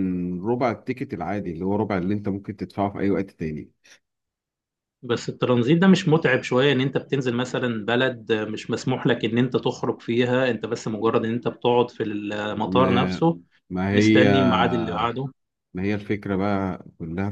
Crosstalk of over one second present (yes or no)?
no